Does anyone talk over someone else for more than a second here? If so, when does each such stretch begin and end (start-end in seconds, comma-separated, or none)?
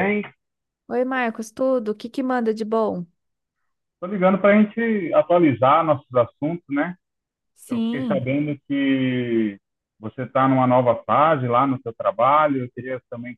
none